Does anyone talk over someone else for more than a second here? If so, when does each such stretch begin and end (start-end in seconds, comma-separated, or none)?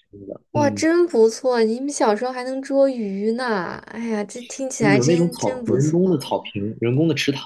4.9-6.2